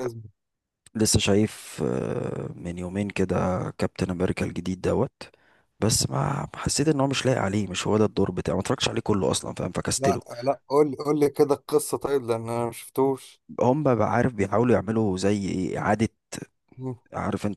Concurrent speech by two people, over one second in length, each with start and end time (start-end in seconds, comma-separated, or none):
none